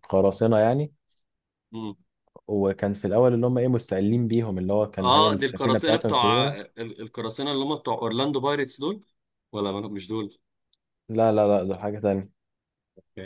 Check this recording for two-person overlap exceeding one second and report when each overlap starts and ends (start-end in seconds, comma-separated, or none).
5.0-6.6